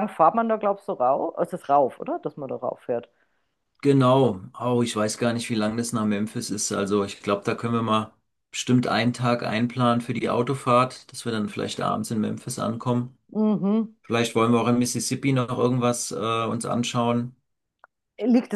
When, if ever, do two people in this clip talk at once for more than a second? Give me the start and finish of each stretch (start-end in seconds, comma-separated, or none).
none